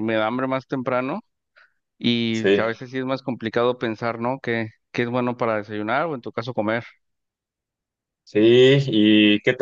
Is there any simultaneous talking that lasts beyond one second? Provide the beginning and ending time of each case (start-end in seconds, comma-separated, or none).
none